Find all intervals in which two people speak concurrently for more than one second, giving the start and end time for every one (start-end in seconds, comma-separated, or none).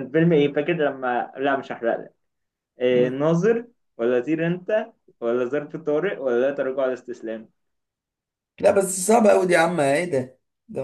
none